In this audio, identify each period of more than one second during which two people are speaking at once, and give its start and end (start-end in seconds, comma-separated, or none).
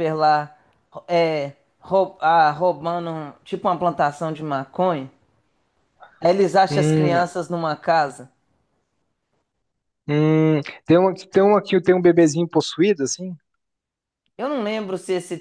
none